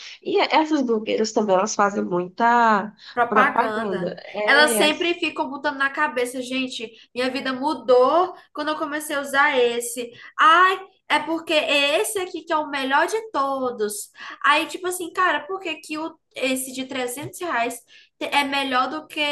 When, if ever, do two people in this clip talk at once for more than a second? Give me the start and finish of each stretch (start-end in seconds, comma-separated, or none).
3.1-4.9